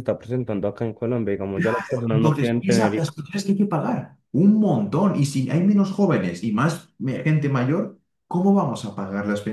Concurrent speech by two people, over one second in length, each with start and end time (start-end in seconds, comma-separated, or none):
1.5-3.1